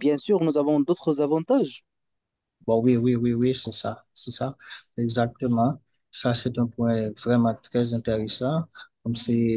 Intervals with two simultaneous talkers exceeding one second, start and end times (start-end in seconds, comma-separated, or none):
none